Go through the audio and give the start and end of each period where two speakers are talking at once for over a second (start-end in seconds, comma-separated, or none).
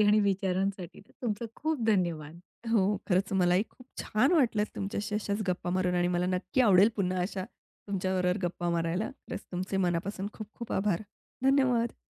none